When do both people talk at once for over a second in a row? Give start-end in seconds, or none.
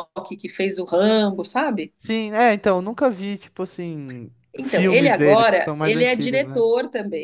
4.6-6.6